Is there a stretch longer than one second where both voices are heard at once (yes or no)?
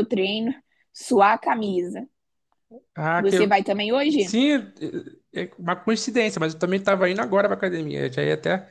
no